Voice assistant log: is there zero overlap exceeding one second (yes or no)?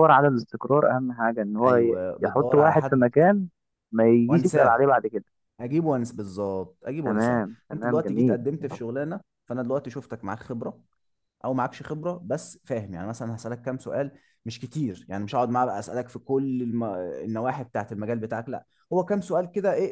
no